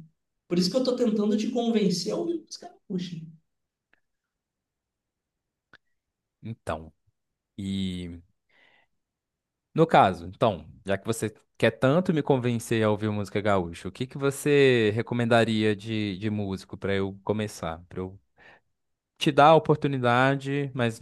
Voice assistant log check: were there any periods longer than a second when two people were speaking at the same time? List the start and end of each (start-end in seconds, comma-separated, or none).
none